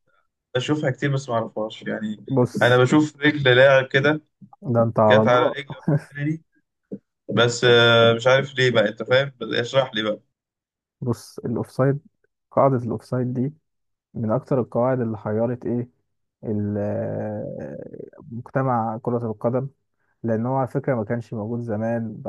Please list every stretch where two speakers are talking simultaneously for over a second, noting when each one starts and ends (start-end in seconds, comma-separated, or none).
none